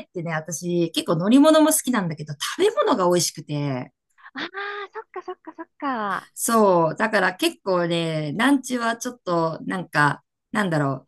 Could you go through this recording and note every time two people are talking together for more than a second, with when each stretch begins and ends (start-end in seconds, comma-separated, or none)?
none